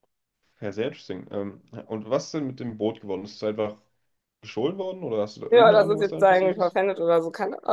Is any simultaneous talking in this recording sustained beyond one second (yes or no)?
yes